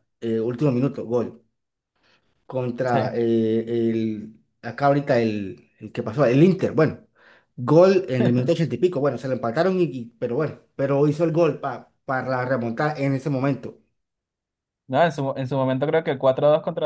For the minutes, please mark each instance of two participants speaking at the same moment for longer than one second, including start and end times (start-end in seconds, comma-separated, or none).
none